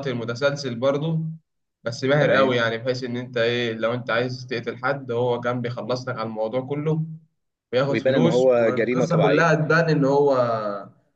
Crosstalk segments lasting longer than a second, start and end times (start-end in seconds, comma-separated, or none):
7.9-9.6